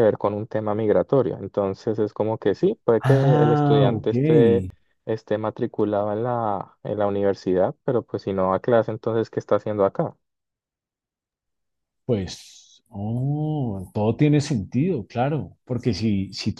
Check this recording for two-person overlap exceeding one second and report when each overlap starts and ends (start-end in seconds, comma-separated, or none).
3.0-4.7